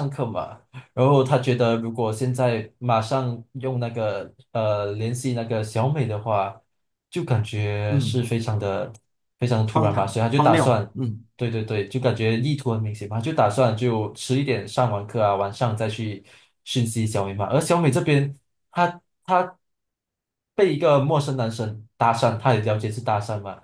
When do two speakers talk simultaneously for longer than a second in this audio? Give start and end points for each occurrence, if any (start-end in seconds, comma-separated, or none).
9.7-10.9